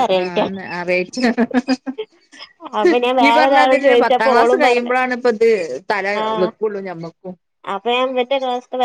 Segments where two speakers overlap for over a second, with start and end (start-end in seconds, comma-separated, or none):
3.2-5.0